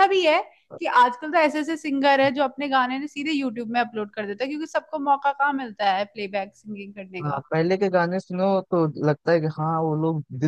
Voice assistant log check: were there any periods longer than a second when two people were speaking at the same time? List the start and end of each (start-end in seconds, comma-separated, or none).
none